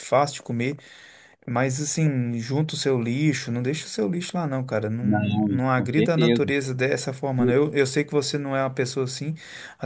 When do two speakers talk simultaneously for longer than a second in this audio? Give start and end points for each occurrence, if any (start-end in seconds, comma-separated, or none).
5.0-6.5